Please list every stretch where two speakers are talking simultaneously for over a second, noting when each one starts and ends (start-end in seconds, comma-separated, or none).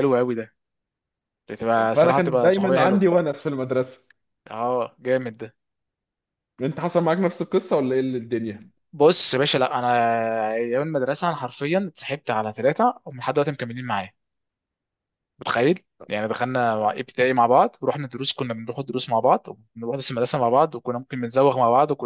1.9-3.1